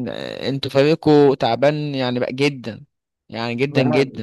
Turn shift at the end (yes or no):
yes